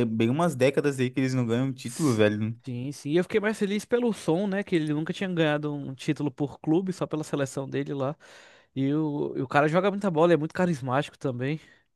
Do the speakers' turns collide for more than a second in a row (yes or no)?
no